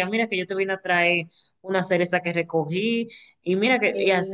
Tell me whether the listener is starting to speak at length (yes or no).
no